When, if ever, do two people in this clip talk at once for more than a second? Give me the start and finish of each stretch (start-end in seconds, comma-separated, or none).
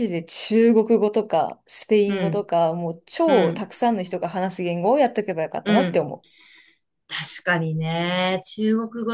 none